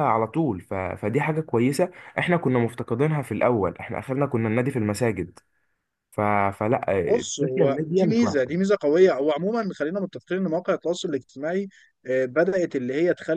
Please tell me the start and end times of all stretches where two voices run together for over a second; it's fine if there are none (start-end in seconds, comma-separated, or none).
7.1-8.7